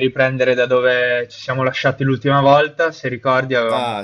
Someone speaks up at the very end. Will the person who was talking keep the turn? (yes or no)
yes